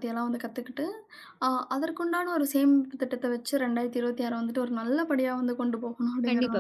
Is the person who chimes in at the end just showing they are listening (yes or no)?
no